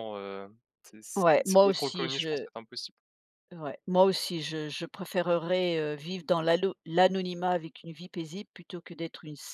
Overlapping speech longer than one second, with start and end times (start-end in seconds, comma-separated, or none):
1.1-2.5